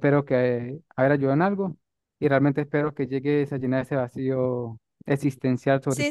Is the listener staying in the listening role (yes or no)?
no